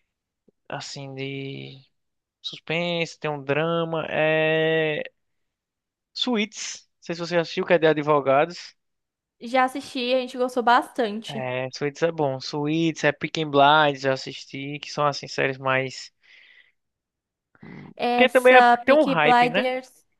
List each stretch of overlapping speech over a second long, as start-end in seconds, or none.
18.1-19.7